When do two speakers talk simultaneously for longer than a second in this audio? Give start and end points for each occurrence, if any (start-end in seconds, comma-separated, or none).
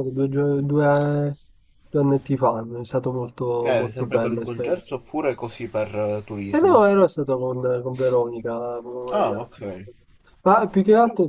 3.6-4.9